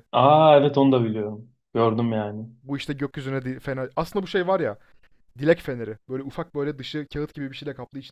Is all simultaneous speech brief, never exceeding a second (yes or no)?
yes